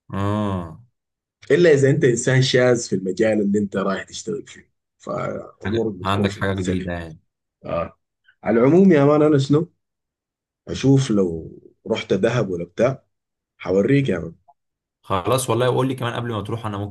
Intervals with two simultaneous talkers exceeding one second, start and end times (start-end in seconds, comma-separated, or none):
5.7-6.9